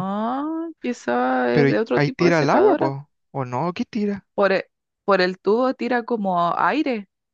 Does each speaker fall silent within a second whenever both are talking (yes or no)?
no